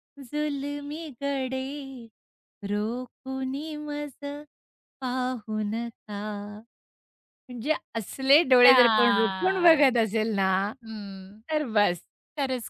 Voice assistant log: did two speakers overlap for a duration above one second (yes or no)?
yes